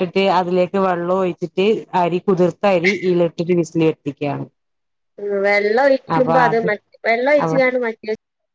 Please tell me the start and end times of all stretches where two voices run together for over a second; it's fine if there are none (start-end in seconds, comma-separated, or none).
none